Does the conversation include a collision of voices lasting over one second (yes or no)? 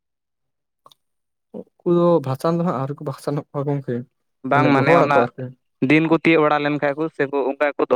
no